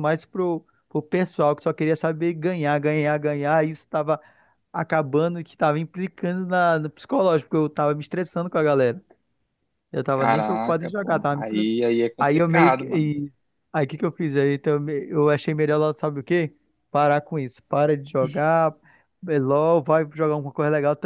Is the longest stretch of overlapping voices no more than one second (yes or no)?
no